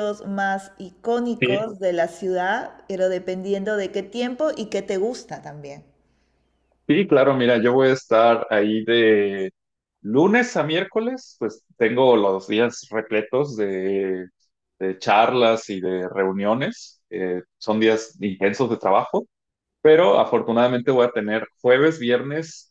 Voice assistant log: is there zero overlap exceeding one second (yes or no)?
yes